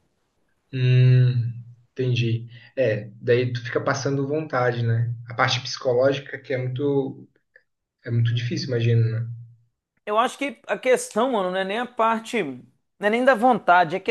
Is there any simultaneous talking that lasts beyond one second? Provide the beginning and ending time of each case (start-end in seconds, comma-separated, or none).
none